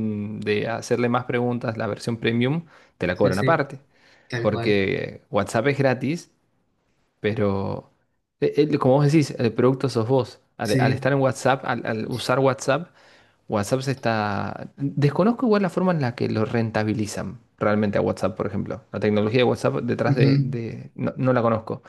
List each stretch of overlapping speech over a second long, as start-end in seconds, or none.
none